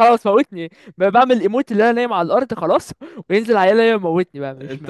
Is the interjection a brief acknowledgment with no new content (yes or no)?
no